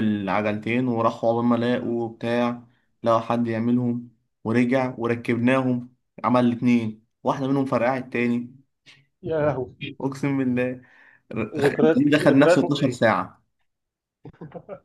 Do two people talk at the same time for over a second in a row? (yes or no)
yes